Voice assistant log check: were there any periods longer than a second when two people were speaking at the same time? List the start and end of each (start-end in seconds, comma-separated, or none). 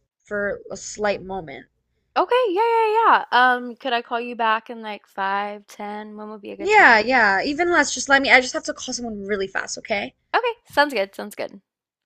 none